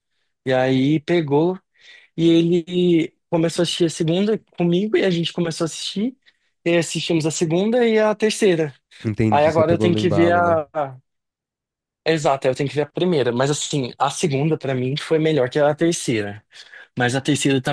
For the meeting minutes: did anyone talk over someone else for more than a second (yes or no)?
yes